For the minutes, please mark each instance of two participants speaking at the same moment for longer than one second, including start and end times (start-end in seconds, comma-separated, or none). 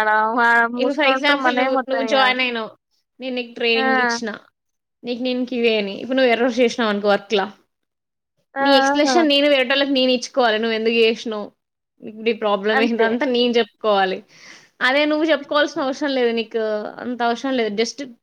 0.8-2.4